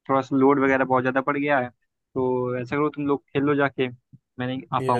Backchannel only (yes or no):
no